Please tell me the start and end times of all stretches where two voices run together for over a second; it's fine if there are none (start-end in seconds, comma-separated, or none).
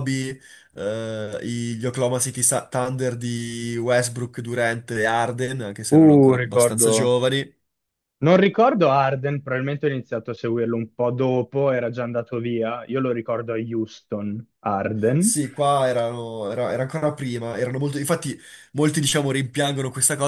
5.9-7.2